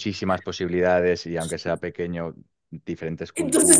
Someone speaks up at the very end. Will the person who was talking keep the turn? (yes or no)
no